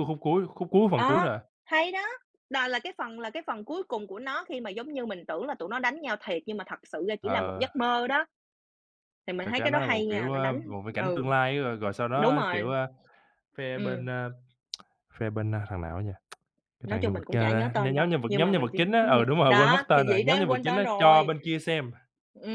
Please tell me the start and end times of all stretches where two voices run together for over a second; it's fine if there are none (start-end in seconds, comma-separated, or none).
9.4-11.3, 16.8-21.3